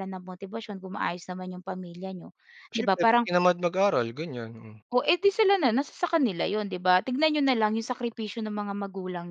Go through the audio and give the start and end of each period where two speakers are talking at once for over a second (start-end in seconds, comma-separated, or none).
none